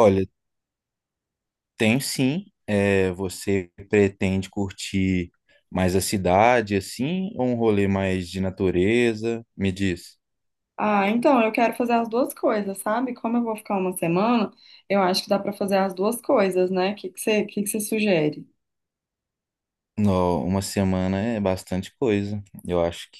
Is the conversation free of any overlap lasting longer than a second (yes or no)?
yes